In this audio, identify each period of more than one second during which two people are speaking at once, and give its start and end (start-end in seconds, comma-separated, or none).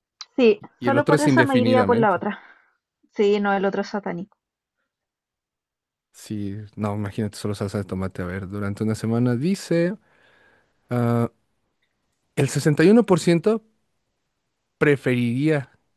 0.8-2.2